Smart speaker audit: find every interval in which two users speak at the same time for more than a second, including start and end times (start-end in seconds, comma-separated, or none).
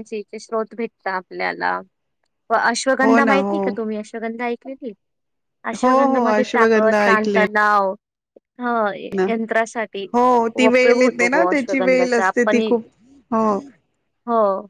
5.8-7.4, 10.6-12.8